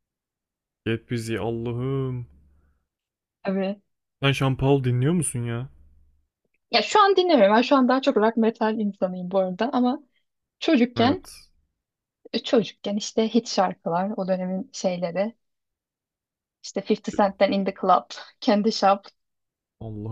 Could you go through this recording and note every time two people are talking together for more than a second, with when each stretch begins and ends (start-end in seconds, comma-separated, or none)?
none